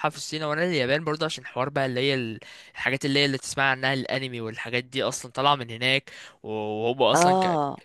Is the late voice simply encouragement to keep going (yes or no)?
yes